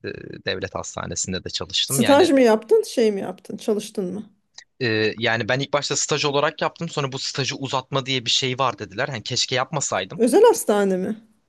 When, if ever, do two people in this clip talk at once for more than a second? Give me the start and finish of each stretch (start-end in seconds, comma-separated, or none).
none